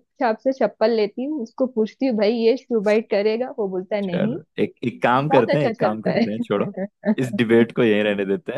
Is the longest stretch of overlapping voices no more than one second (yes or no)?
no